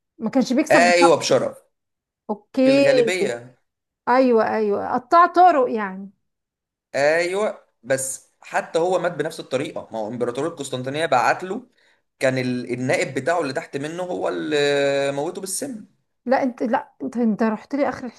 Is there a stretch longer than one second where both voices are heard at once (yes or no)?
no